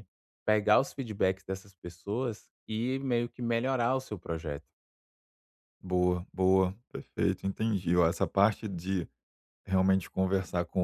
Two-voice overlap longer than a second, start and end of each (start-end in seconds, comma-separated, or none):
none